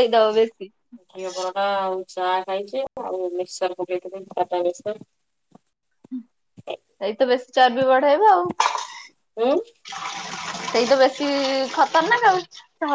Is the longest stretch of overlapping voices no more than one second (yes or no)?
yes